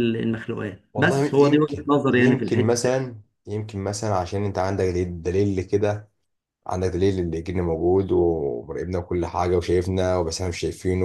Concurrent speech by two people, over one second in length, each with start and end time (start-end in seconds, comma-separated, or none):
0.9-3.0